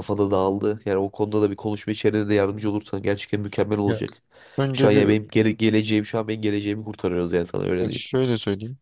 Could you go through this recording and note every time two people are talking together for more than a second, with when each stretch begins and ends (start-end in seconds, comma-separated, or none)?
none